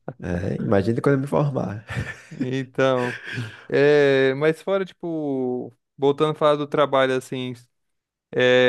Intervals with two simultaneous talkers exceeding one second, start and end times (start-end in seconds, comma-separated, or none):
none